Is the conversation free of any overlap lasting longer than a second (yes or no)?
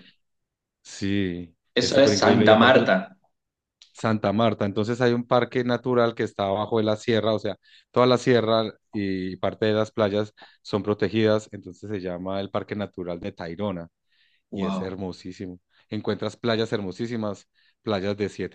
no